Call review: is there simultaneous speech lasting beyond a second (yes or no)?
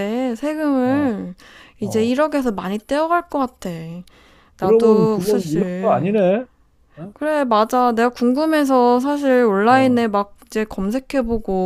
yes